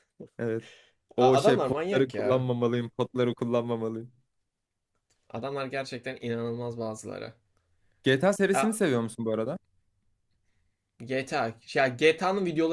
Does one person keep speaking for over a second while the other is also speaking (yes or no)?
yes